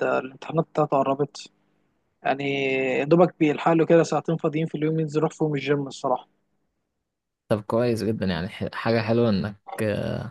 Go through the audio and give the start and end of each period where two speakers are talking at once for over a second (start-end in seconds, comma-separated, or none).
none